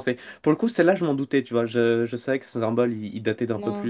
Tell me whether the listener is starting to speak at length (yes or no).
no